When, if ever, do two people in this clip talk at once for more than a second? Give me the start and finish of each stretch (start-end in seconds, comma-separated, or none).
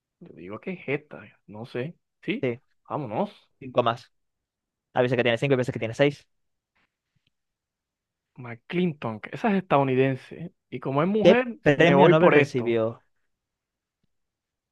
11.2-12.8